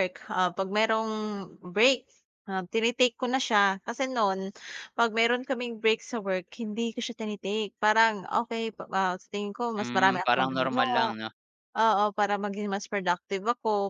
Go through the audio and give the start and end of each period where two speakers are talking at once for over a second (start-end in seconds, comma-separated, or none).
9.8-11.1